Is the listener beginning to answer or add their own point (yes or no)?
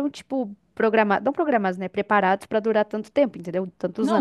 yes